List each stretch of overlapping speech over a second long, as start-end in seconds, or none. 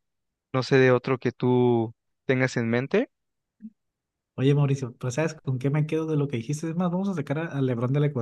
none